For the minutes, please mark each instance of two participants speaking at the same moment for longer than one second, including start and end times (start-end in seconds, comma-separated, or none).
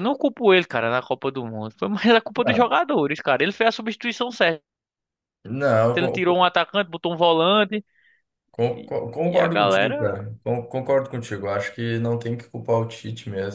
8.7-10.2